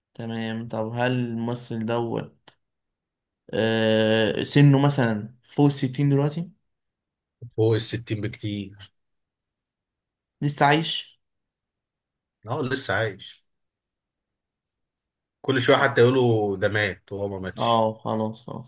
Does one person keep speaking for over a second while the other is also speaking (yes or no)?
no